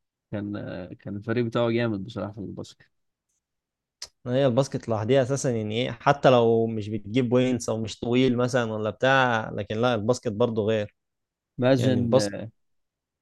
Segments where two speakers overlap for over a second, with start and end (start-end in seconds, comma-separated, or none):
none